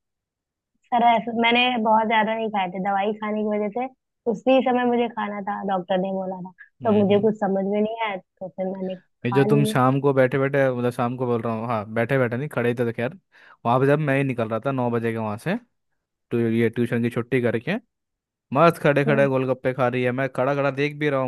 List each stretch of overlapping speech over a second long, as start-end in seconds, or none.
none